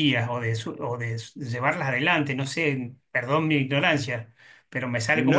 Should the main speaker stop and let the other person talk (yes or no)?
yes